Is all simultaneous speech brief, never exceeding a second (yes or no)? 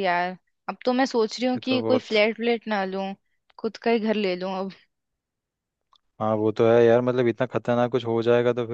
yes